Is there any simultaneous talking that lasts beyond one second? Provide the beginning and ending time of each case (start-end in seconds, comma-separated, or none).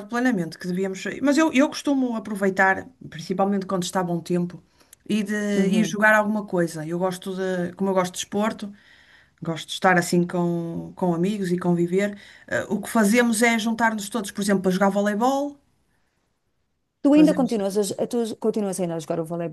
none